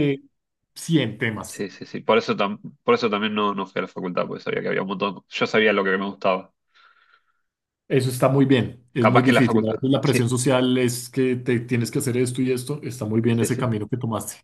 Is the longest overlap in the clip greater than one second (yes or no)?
yes